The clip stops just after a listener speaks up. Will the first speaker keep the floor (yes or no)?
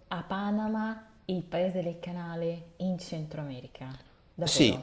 no